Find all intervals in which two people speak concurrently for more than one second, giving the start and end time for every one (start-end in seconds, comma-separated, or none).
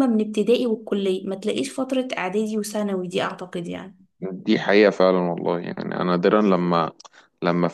none